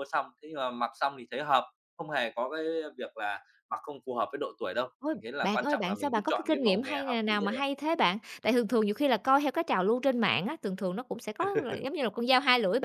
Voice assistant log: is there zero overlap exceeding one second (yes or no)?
no